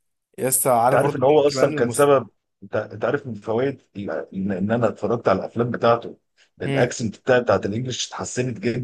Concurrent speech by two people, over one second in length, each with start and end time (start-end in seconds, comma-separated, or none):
0.8-2.1